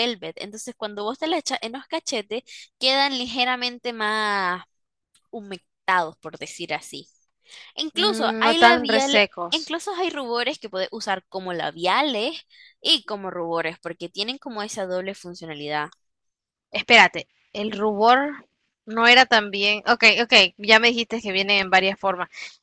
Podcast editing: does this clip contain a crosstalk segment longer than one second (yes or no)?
yes